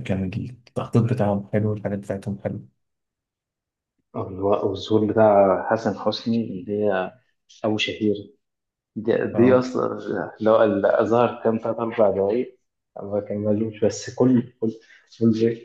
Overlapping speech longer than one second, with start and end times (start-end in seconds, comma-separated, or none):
none